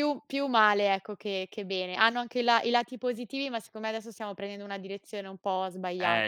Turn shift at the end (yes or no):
yes